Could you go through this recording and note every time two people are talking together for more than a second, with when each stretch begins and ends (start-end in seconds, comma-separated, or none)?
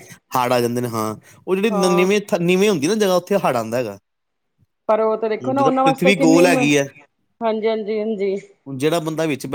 5.4-6.8